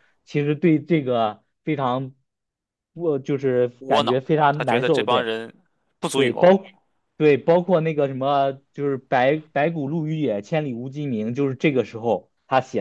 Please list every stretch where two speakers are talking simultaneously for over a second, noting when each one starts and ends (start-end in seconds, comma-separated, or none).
3.8-5.3